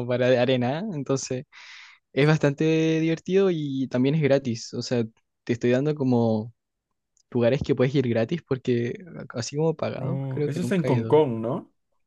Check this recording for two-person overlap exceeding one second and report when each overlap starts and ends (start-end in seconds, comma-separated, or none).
9.9-11.2